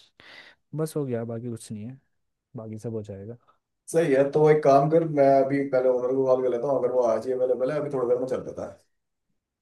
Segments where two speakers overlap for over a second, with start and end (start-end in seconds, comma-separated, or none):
none